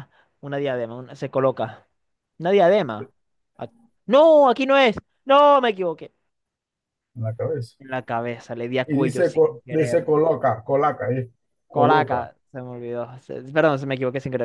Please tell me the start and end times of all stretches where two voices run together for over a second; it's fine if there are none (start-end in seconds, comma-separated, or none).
8.9-10.1